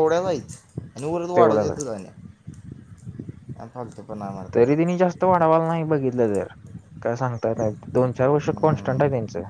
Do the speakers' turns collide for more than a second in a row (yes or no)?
no